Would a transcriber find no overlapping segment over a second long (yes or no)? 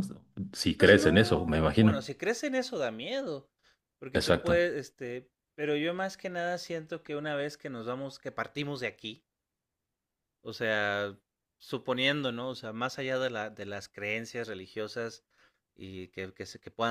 no